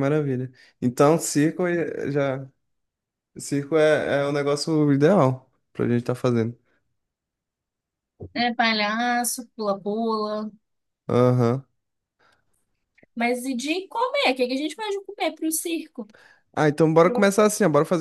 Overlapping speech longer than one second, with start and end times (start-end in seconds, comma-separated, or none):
none